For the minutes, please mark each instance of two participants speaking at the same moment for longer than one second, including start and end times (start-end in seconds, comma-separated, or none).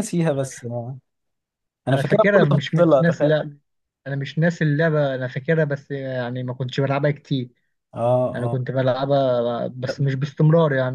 1.9-3.3